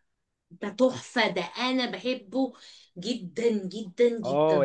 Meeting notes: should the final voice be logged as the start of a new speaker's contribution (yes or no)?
yes